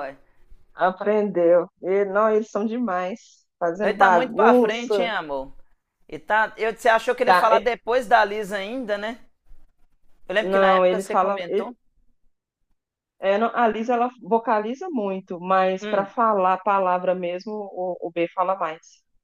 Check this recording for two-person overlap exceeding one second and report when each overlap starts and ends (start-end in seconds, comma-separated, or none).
3.8-5.1, 10.4-11.7